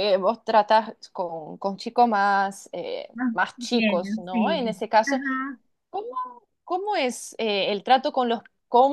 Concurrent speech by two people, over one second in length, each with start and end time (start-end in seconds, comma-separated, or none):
3.1-5.2